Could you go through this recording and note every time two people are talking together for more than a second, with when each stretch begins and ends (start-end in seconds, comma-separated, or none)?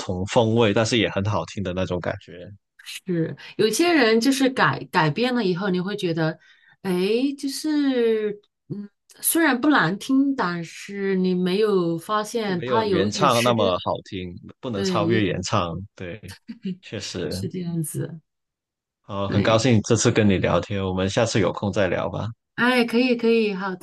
12.4-13.7